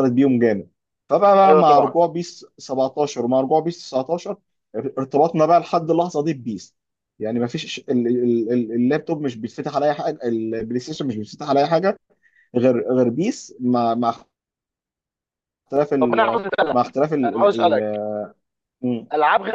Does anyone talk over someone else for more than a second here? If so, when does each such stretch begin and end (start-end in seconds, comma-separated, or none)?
16.0-17.9